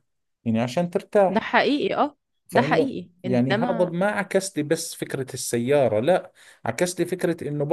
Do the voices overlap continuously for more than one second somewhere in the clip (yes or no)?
yes